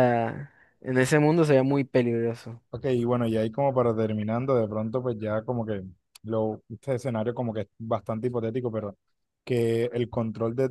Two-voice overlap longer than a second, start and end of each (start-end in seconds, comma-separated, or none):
none